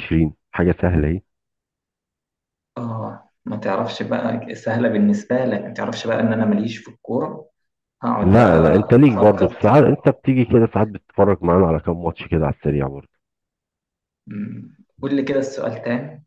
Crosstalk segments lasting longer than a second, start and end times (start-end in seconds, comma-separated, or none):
8.2-9.8